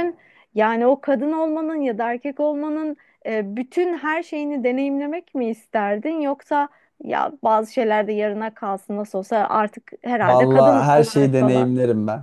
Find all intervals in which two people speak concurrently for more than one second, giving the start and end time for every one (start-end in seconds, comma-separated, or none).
10.2-11.7